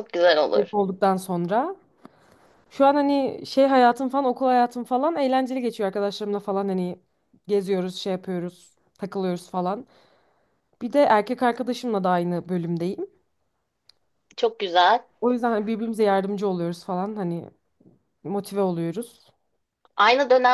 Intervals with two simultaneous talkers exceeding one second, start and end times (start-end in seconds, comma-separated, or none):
none